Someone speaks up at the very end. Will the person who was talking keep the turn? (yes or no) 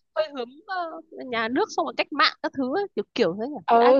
no